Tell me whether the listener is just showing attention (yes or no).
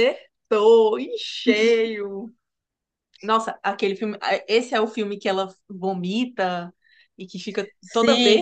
no